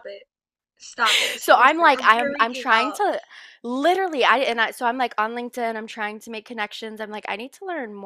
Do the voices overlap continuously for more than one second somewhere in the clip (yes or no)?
yes